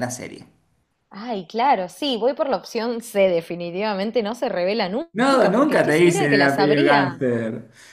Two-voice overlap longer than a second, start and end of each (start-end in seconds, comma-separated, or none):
5.1-7.2